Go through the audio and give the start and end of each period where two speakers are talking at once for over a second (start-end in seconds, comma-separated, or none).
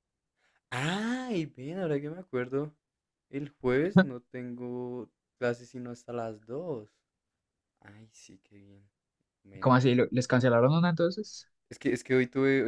none